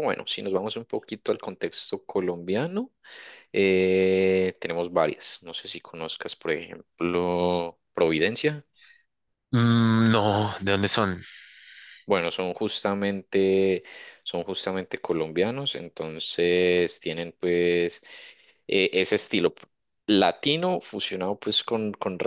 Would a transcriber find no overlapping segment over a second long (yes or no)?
yes